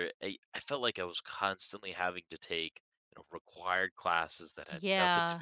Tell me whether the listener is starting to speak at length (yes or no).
no